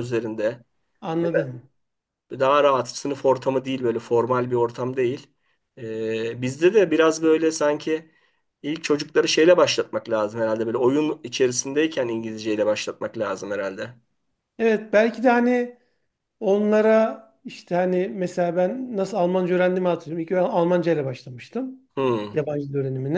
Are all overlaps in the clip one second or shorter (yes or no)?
yes